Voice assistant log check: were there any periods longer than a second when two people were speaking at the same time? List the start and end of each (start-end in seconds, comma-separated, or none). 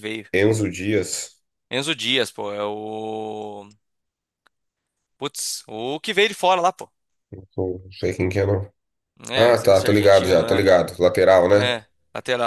9.3-10.7